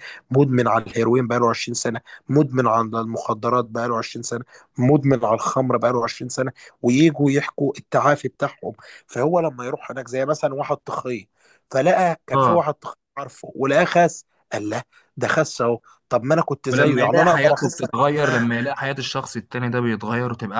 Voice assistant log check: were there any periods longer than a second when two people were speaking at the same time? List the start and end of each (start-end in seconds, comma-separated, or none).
16.7-18.5